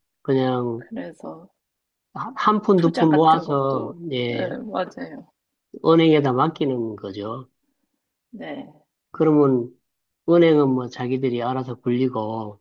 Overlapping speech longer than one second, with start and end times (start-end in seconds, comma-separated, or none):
2.7-4.5